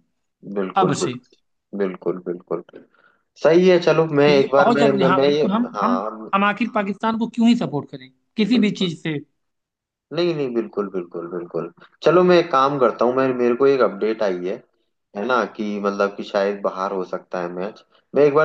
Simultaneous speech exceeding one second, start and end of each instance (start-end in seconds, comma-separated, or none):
4.2-6.3